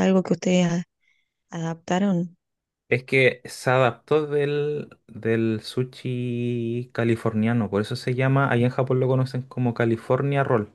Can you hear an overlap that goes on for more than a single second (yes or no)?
no